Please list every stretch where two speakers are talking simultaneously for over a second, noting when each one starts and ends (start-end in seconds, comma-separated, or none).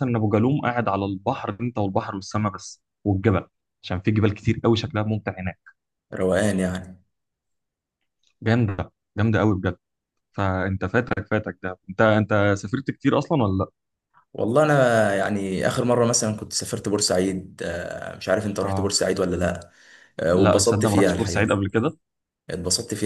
20.4-21.6